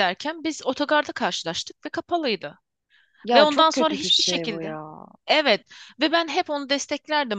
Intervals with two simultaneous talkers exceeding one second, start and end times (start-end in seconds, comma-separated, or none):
3.3-4.7